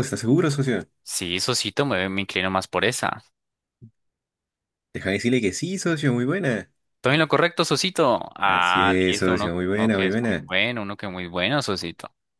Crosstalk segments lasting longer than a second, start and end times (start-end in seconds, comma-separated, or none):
8.4-10.4